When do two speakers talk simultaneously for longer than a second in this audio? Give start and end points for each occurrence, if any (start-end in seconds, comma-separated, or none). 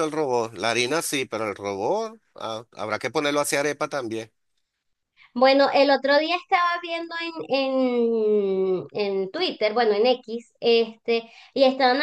none